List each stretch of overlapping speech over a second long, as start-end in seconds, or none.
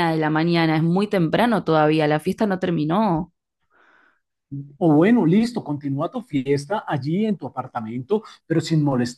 none